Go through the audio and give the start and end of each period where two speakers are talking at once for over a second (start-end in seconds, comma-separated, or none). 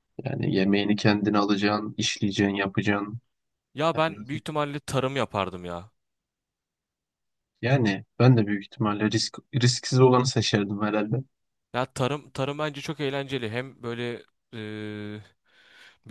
none